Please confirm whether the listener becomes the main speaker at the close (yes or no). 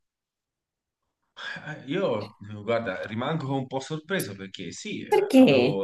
no